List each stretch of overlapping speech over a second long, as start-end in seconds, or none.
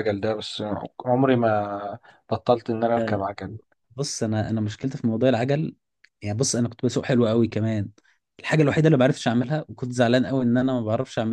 none